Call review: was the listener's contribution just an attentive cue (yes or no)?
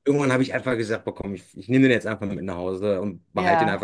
yes